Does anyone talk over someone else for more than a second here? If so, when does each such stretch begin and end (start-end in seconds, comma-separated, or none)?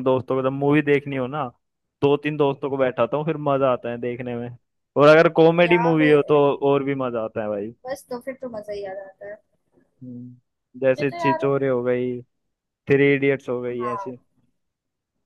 none